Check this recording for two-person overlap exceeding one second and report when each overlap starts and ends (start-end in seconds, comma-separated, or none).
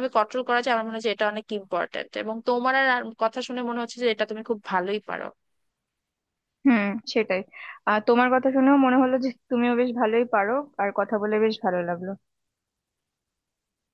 none